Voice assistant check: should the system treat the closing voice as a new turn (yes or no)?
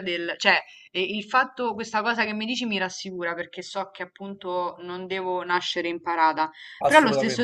no